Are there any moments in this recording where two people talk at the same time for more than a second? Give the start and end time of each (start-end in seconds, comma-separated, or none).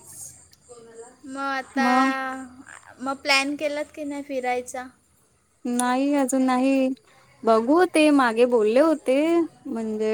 none